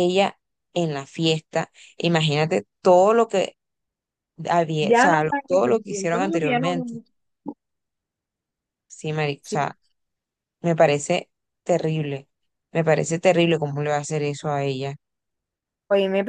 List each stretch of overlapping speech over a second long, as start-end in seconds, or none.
4.8-7.0